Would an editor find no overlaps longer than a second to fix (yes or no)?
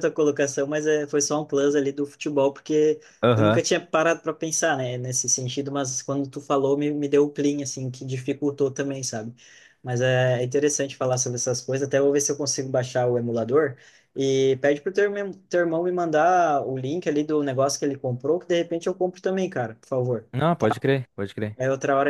yes